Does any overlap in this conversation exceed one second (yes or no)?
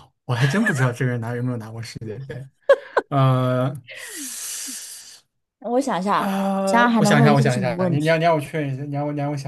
yes